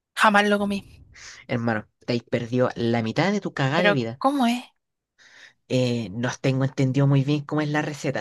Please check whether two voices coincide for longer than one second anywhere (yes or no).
no